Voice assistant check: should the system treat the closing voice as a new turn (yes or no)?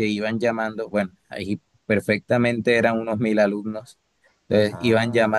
no